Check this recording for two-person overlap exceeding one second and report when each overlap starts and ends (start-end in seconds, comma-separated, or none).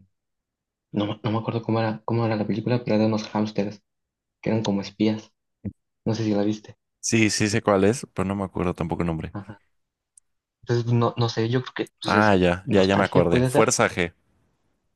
12.1-13.8